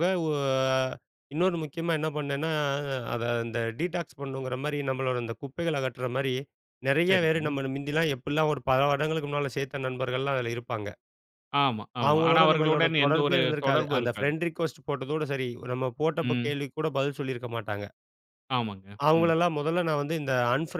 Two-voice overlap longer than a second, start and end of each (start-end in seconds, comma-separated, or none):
12.1-14.3